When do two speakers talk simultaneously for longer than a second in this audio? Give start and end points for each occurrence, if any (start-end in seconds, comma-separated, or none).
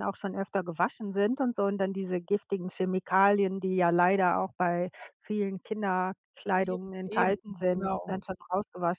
6.5-8.2